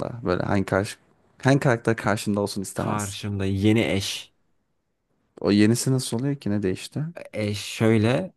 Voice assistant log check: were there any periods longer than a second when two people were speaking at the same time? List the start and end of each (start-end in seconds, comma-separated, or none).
none